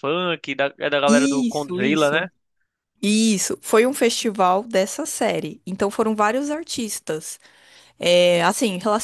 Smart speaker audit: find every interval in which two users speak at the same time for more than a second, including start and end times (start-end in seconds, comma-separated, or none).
1.1-2.3